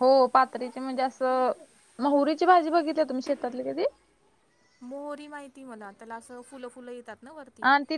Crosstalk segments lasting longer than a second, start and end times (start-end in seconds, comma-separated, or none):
none